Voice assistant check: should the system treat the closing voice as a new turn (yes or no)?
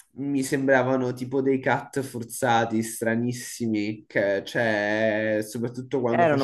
yes